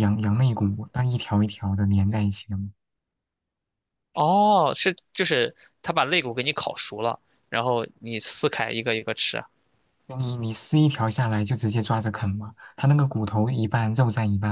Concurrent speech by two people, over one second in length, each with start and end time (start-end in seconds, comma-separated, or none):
none